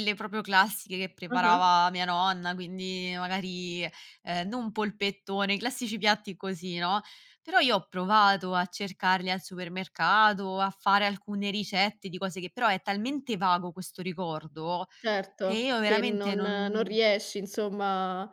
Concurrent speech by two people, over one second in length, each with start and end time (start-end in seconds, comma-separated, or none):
15.4-16.9